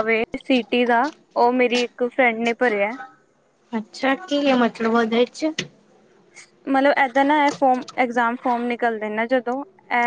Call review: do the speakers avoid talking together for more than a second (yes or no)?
yes